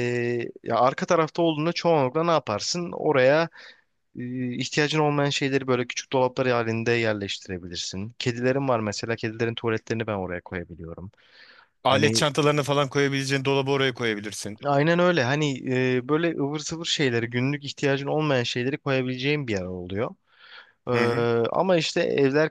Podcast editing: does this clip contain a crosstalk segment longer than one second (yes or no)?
no